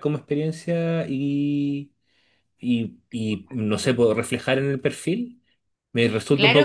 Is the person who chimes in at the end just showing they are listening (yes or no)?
no